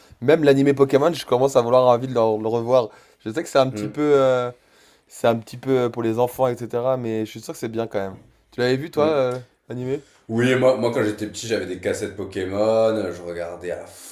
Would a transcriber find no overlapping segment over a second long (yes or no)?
yes